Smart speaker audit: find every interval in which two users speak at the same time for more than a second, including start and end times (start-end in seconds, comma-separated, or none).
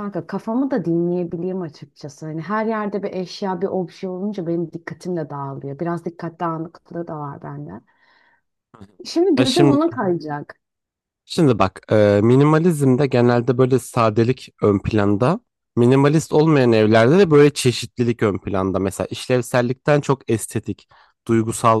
none